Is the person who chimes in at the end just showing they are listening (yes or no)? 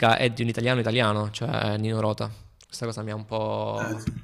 yes